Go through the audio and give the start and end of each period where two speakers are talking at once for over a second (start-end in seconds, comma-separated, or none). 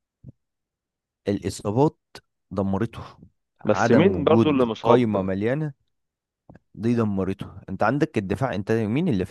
3.6-5.3